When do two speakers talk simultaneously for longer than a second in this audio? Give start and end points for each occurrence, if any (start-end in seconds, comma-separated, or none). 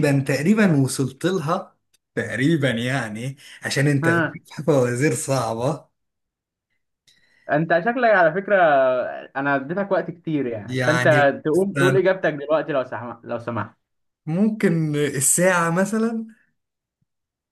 10.7-12.0